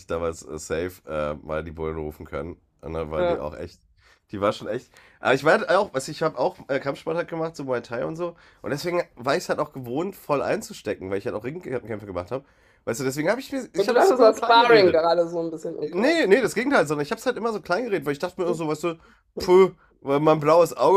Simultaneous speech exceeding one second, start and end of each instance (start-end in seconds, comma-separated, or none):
13.8-15.1